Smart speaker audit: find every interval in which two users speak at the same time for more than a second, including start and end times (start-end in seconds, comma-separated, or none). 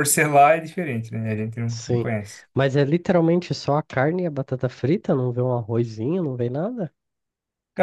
none